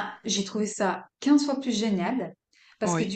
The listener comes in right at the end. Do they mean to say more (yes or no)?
no